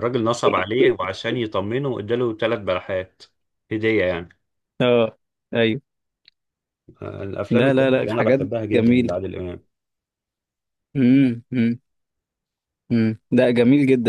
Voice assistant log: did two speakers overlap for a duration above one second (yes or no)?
yes